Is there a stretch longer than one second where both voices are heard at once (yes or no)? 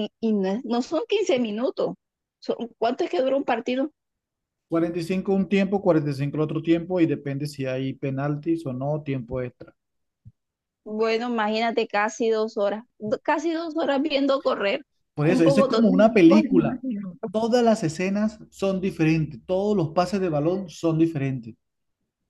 yes